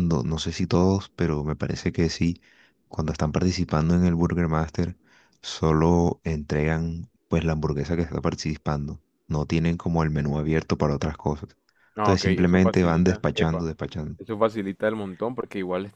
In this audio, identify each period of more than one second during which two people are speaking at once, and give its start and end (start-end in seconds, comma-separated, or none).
12.0-13.7